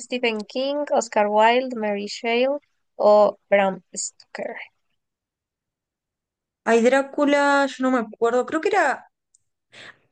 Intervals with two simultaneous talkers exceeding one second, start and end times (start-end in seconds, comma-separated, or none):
none